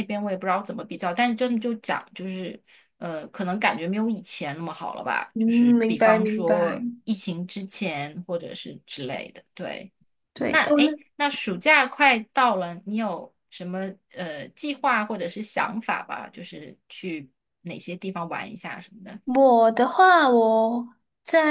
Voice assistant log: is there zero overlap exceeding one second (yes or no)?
no